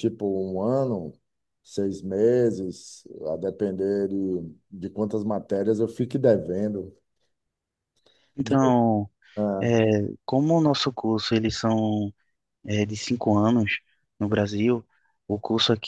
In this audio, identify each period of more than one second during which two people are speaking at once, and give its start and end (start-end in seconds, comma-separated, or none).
none